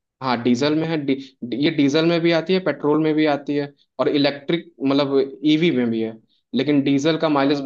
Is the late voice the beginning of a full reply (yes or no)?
no